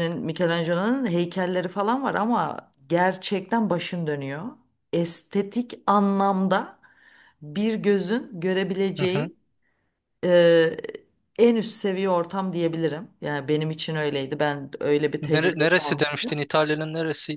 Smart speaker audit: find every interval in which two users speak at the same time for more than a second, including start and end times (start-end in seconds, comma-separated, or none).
15.2-16.4